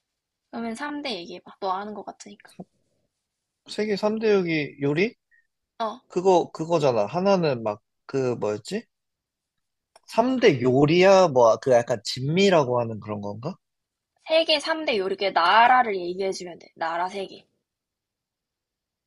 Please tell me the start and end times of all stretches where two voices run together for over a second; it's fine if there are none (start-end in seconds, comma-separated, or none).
none